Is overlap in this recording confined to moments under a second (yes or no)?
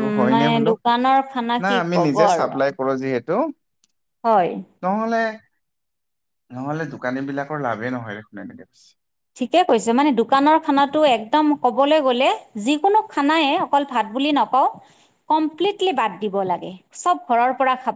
yes